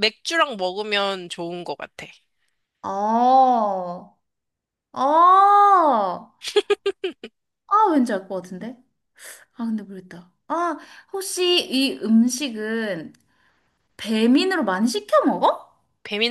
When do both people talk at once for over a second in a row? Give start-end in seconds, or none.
none